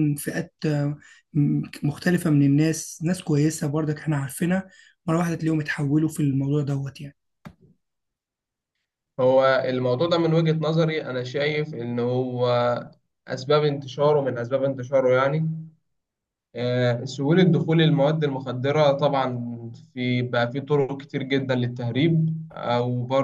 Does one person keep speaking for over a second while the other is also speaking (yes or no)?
no